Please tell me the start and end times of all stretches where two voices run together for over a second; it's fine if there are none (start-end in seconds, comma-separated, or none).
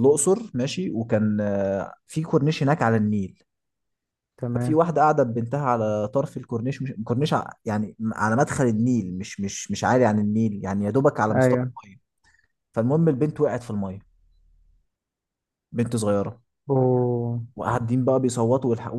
none